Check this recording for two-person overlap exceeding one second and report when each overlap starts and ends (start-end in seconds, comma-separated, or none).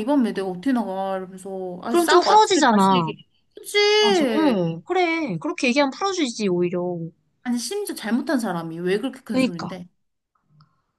1.9-3.1